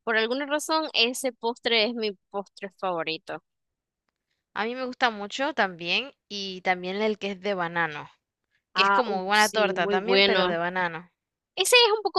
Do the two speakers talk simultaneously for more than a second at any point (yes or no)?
yes